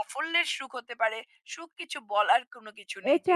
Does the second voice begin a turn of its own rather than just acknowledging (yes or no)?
yes